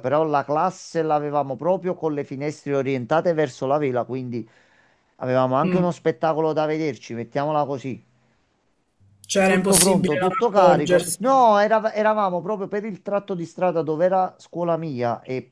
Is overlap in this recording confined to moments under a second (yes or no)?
no